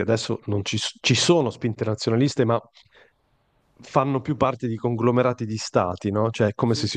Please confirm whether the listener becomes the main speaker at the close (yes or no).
no